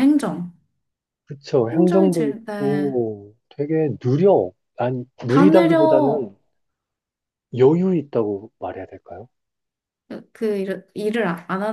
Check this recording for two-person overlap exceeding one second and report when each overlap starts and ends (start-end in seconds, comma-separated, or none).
1.7-2.9